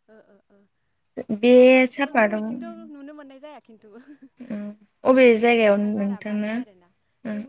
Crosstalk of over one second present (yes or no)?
yes